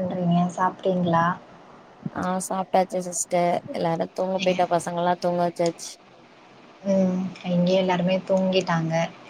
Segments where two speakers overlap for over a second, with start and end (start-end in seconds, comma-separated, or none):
none